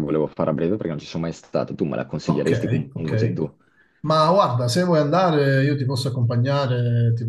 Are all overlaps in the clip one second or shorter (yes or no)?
no